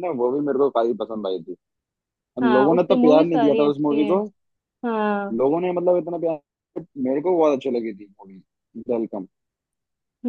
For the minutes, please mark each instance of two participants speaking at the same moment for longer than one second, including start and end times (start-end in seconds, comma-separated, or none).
2.4-4.2